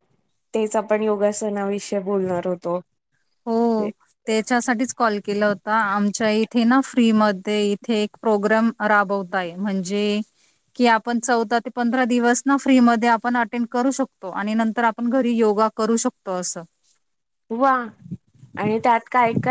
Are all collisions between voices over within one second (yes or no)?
yes